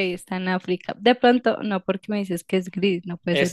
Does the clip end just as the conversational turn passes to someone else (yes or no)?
yes